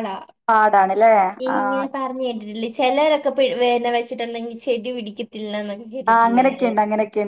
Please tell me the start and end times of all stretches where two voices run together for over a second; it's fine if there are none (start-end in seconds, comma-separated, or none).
none